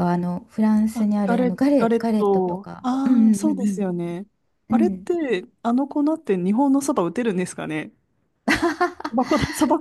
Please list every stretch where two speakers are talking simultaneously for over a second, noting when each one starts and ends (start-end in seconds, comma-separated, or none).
0.9-3.9